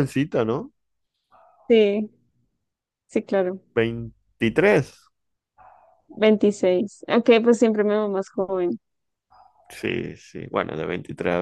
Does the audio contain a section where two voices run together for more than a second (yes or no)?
no